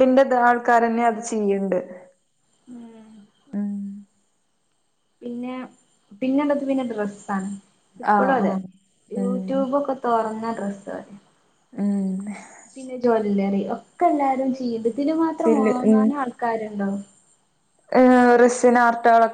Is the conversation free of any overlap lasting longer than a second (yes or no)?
yes